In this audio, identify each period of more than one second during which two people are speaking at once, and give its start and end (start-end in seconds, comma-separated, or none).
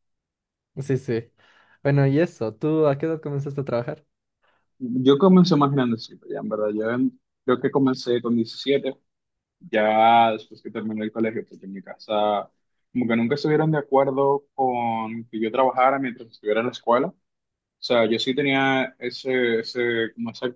none